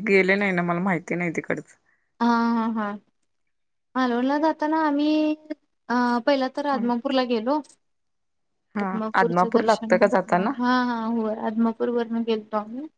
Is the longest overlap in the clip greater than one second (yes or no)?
yes